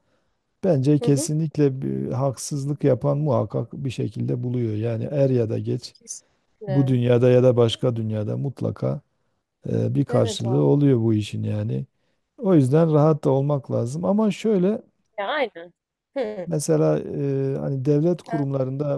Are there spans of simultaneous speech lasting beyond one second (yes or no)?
no